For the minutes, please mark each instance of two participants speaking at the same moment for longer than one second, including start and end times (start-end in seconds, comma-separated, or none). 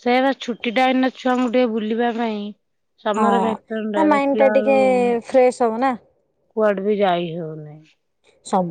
3.2-4.7